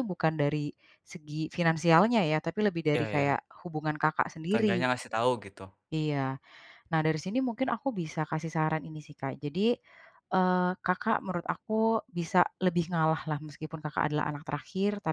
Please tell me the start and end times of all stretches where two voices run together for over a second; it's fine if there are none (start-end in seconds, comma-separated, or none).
none